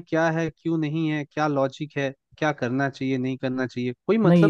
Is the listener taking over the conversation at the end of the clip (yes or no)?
yes